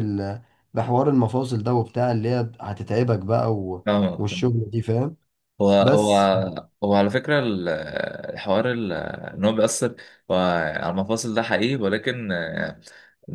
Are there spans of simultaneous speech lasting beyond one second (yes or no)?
no